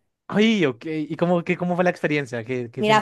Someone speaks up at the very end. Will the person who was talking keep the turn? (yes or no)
no